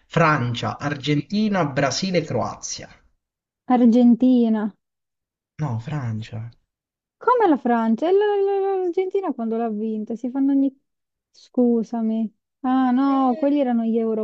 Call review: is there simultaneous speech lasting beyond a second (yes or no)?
no